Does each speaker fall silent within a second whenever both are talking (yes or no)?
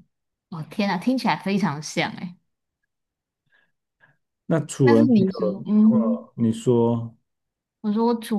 no